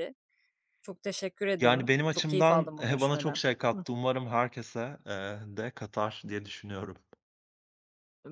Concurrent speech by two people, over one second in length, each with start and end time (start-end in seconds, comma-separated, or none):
1.6-3.8